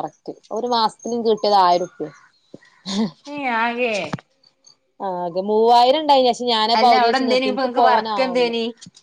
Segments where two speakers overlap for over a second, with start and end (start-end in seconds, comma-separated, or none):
6.8-8.5